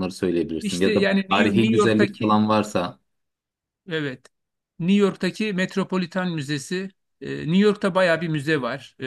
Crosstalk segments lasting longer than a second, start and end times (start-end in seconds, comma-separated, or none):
0.6-2.4